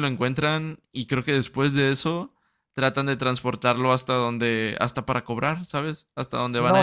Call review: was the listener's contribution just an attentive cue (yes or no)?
no